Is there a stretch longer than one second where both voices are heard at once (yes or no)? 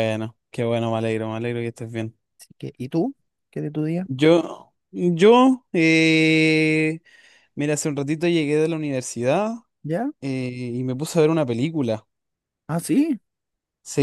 no